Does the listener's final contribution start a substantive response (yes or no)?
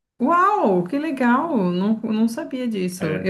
no